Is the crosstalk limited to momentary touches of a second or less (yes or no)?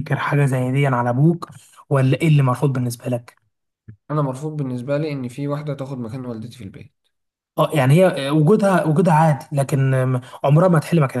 yes